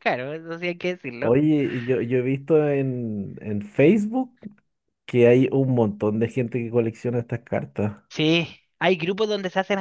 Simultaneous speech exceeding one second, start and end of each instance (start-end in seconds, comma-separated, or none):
none